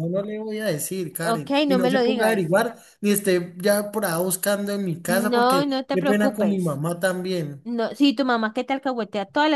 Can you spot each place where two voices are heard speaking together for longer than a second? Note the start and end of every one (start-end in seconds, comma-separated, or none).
1.2-2.5, 5.1-6.8